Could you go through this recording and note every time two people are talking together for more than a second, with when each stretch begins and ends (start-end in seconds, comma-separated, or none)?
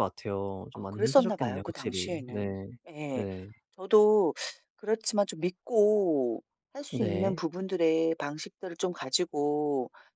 0.7-2.5